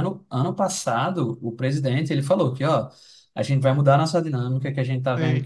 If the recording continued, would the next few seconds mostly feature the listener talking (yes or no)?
no